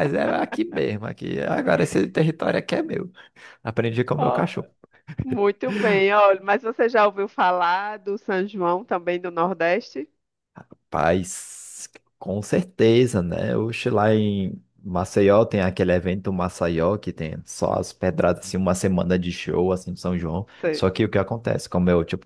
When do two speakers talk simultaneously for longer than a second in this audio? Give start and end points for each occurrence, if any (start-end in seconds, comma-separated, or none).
none